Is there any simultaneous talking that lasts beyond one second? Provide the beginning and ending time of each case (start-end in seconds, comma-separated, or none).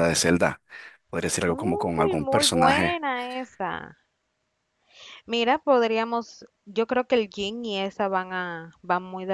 1.5-3.0